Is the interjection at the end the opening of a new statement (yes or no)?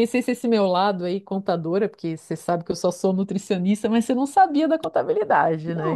yes